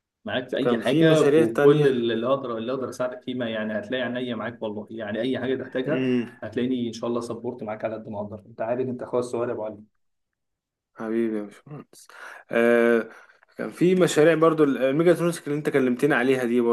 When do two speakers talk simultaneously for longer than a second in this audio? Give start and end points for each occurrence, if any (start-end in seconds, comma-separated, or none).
0.6-2.0